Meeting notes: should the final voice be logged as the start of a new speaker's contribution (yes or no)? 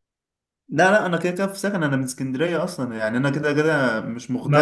yes